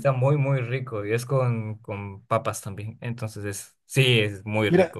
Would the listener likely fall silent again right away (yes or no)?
no